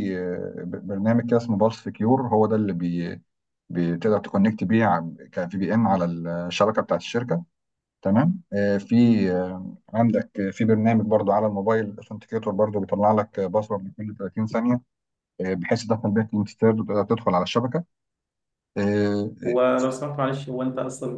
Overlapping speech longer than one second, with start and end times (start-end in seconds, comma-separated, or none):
none